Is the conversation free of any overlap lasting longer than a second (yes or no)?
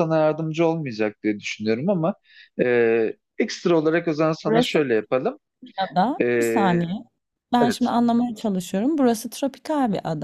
yes